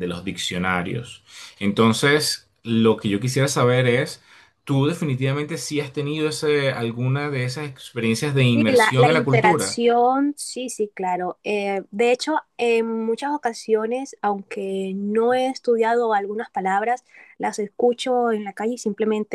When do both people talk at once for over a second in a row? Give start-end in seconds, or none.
8.5-9.8